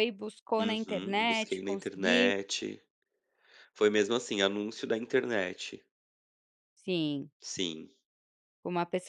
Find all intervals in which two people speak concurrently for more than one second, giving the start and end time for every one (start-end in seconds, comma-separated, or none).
0.6-2.3